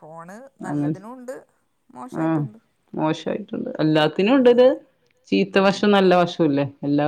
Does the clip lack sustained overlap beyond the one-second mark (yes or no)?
yes